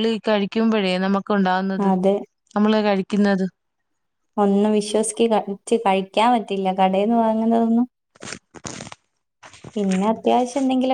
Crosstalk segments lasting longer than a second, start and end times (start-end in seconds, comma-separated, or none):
none